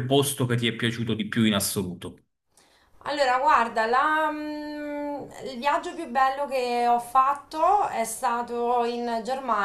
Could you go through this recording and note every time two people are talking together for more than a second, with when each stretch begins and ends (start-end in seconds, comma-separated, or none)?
none